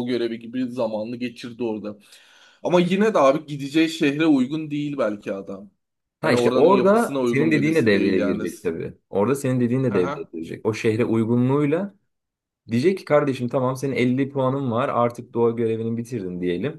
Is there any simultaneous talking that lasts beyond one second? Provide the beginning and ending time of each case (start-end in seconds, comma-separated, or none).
6.2-8.4